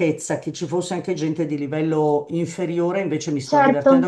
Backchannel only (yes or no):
yes